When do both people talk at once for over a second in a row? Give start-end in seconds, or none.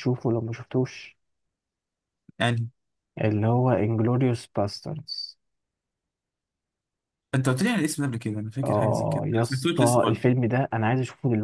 8.6-10.2